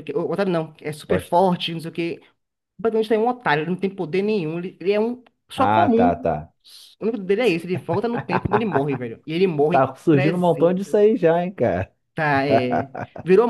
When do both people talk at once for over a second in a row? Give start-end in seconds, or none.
9.7-11.0